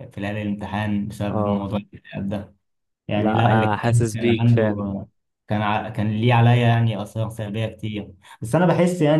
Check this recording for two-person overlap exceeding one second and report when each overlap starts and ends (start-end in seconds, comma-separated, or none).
3.2-4.8